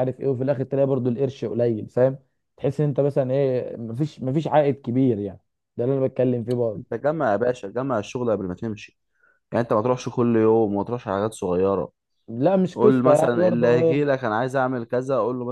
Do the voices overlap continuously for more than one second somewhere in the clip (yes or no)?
yes